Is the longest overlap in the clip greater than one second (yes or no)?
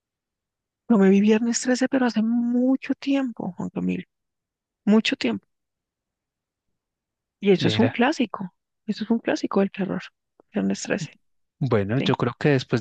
no